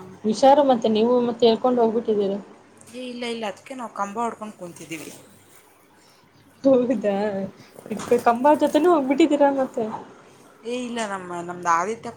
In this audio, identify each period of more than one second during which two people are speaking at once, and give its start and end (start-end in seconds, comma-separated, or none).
none